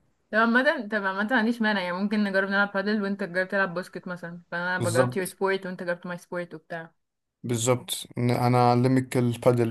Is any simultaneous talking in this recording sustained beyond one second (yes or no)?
no